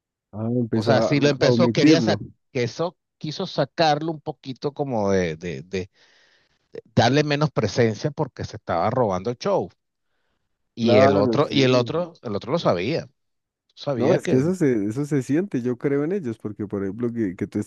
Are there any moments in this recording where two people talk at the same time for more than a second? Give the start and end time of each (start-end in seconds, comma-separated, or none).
0.7-2.2, 10.8-12.1